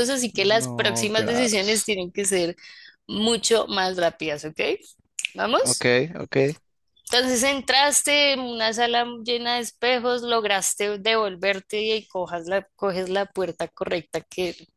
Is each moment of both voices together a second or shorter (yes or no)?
no